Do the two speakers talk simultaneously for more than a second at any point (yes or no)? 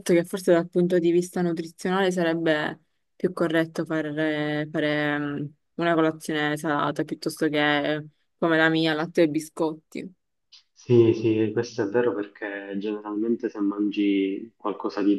no